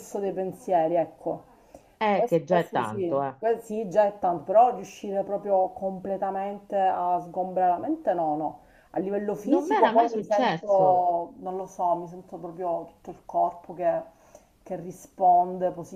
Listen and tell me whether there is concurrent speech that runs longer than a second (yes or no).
yes